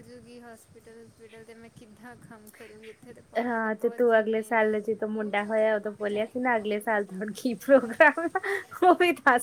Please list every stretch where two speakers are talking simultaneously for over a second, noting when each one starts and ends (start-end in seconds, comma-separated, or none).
3.5-4.8